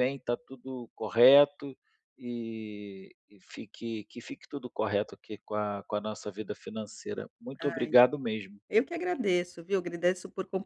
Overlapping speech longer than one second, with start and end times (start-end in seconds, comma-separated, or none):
none